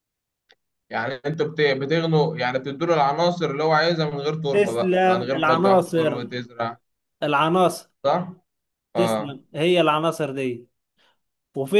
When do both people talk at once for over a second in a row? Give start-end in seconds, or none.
4.5-6.3